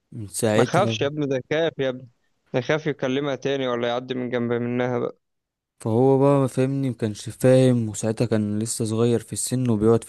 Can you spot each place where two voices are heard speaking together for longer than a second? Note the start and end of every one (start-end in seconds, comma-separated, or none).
none